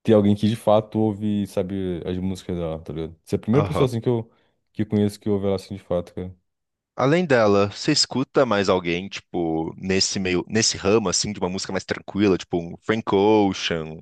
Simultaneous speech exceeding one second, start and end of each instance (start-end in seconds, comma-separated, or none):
none